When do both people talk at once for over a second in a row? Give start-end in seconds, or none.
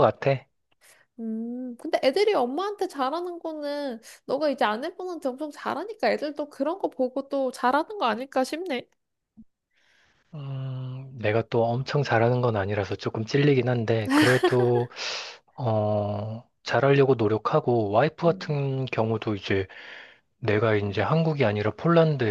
none